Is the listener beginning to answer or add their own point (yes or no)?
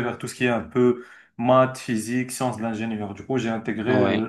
no